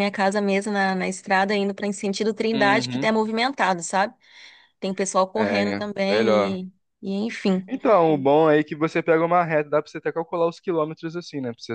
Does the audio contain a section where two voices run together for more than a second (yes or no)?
yes